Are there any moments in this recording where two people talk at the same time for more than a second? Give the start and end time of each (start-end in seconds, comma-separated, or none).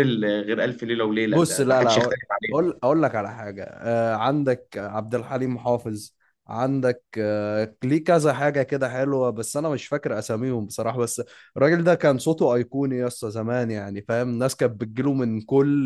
1.3-2.7